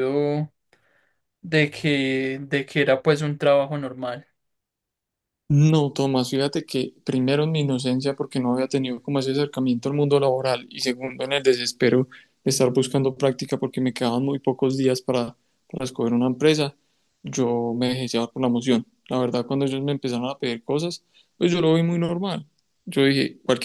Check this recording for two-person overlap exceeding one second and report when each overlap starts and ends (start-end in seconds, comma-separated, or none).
none